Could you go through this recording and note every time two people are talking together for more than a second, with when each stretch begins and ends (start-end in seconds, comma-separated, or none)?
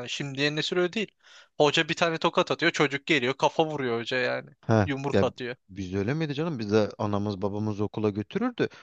none